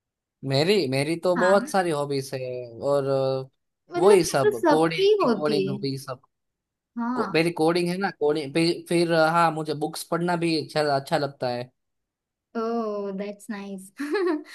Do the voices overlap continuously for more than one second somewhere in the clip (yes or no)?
yes